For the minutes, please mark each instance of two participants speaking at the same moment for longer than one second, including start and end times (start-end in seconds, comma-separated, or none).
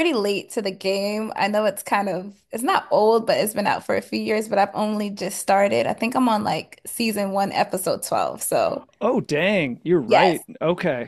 none